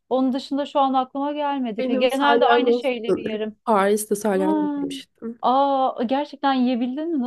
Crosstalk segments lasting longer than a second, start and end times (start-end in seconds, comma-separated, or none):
1.8-3.5